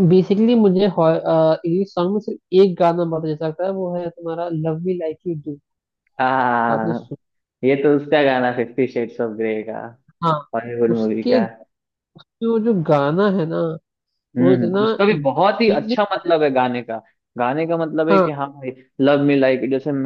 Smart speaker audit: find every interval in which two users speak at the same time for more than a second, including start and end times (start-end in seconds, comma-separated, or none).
14.4-16.0